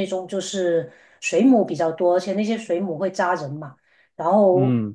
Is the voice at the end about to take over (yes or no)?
no